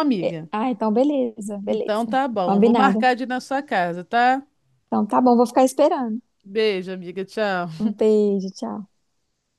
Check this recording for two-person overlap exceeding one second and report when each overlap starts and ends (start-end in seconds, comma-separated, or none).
1.7-3.1